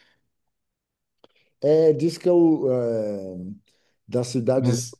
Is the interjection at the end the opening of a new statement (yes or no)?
no